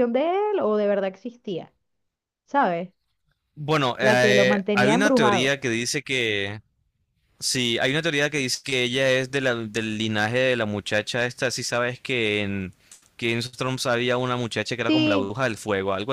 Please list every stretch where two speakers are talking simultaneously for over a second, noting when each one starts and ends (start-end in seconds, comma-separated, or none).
4.0-5.6